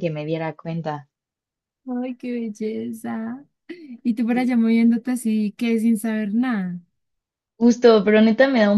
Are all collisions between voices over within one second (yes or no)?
yes